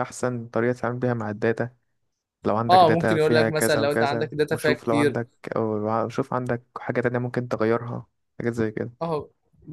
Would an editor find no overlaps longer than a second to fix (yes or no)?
no